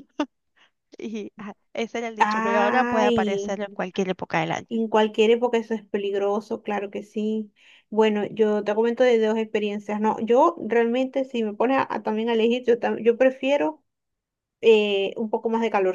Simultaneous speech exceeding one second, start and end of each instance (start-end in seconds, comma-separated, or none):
2.2-3.6